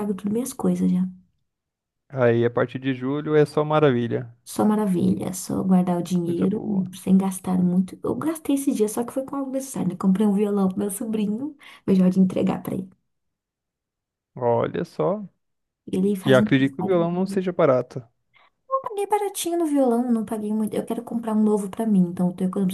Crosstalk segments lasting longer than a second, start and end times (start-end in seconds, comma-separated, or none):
16.2-17.4